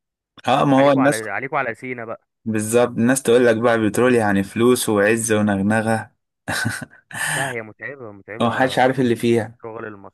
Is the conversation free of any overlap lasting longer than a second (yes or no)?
yes